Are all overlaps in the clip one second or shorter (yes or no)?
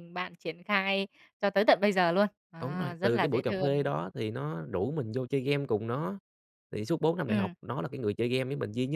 no